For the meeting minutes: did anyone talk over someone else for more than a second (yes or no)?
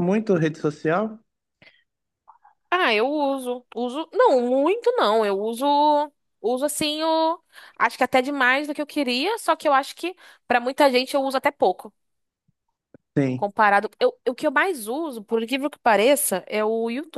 no